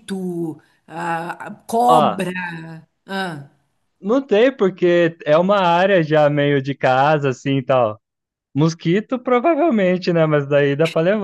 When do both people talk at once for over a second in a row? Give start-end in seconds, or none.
none